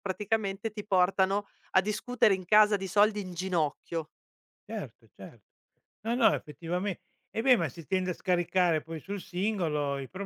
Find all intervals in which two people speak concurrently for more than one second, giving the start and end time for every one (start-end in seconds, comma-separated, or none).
none